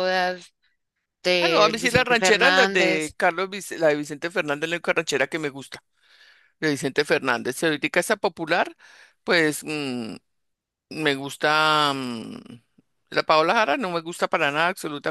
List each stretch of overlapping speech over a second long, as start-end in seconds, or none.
1.4-3.1